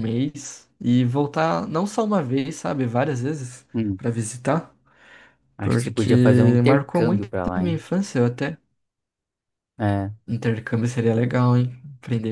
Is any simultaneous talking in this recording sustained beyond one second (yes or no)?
yes